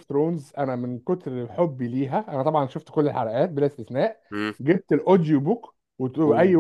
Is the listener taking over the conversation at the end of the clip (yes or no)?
no